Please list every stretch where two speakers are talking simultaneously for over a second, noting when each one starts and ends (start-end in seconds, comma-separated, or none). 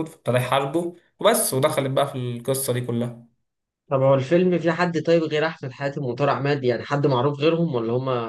none